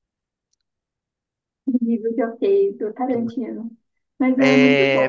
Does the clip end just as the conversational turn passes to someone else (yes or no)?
yes